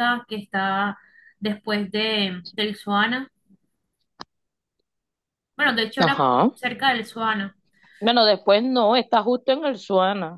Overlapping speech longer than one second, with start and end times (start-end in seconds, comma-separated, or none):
none